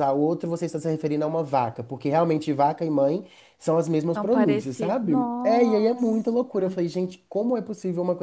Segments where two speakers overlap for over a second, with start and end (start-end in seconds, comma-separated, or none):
4.1-6.3